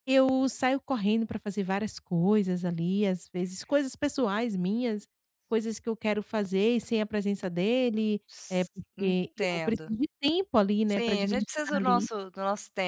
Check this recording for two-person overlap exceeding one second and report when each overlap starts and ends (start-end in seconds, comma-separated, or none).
8.3-9.9, 10.9-12.1